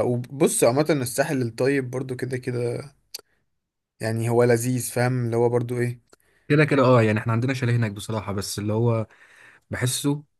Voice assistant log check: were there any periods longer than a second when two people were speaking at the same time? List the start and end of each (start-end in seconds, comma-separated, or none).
none